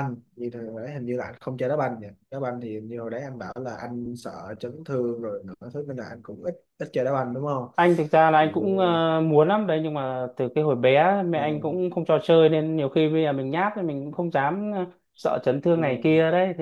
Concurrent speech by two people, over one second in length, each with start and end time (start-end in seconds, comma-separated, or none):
none